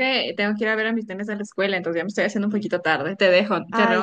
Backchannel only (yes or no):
no